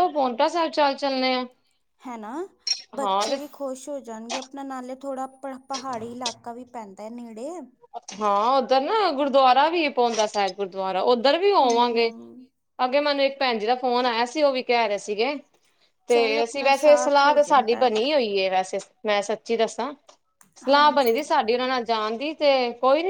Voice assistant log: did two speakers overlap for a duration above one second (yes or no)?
yes